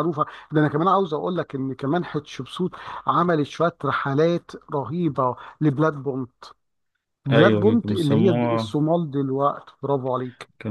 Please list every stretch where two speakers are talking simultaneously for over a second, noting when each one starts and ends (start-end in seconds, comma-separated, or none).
7.3-8.8